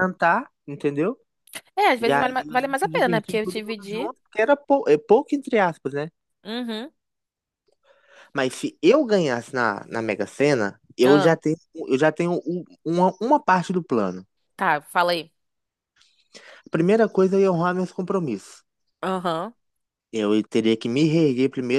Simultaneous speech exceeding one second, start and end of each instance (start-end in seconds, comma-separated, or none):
2.0-4.1